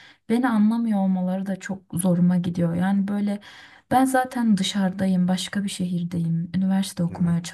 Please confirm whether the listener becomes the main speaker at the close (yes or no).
no